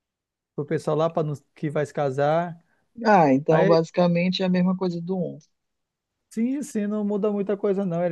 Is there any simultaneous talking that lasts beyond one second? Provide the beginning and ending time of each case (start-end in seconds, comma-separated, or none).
none